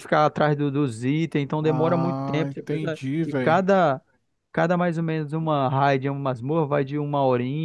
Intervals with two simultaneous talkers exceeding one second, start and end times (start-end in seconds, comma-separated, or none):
1.6-3.6